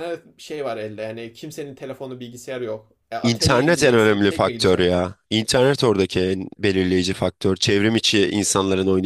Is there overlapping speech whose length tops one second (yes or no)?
yes